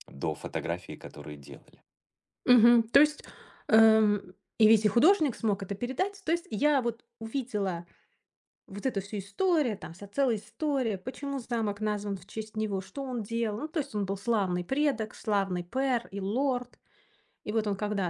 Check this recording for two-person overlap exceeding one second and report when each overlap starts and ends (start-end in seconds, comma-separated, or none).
none